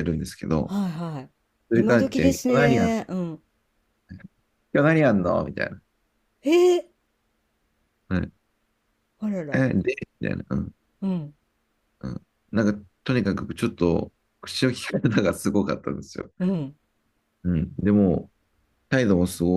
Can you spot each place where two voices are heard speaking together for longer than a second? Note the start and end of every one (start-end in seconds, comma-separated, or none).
1.7-2.9